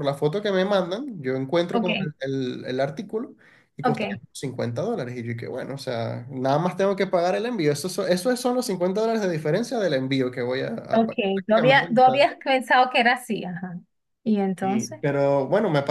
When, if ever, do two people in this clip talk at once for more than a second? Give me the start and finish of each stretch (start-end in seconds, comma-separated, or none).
10.9-12.3